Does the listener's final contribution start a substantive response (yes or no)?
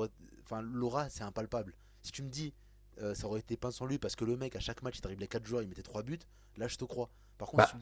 yes